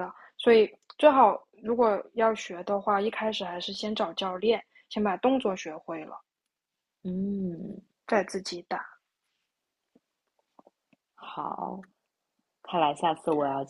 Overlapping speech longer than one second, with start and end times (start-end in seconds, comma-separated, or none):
none